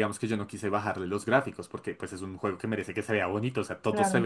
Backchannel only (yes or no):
yes